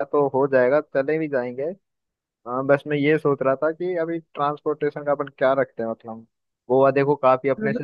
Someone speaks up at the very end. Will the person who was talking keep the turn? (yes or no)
yes